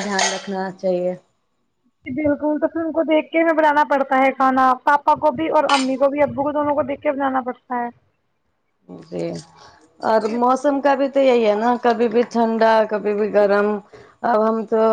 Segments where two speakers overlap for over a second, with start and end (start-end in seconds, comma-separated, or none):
none